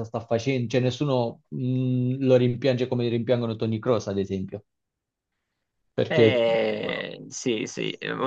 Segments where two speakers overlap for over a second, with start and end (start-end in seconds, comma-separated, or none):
none